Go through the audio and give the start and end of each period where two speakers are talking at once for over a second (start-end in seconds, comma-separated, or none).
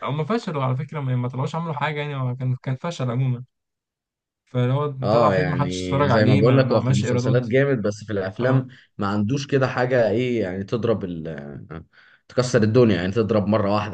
5.0-7.5